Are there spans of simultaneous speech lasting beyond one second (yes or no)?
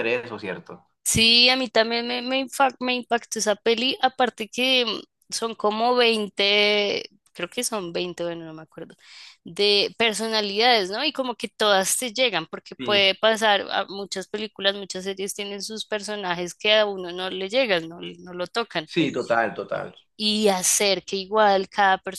no